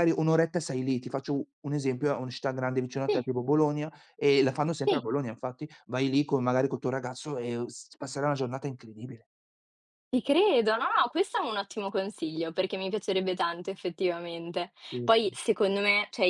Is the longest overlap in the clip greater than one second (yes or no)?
no